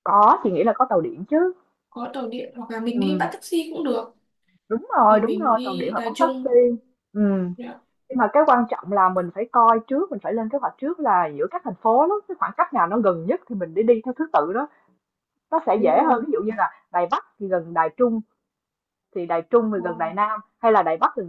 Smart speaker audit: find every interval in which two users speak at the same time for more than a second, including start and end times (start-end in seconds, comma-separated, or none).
5.1-6.6